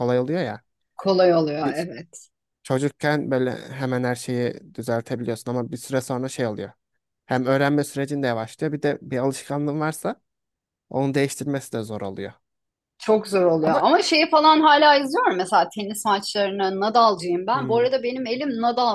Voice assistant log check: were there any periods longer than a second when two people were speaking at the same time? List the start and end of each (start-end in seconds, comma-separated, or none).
none